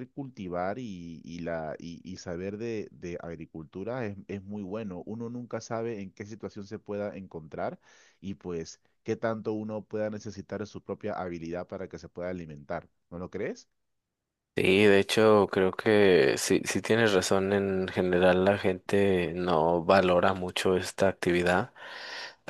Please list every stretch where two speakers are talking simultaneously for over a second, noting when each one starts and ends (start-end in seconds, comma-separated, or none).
none